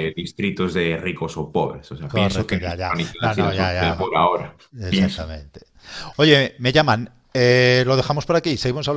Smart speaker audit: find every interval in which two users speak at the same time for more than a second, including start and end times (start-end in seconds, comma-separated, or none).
2.1-4.1